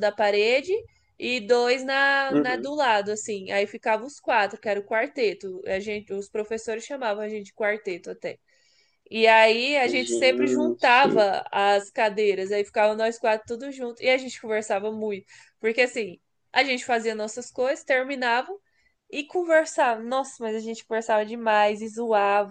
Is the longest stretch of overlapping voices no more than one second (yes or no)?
no